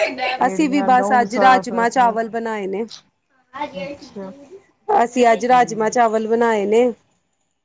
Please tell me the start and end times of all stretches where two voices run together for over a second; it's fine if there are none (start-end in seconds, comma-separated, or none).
0.5-2.2